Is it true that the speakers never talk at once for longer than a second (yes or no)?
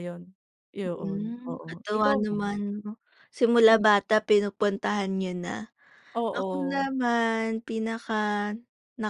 no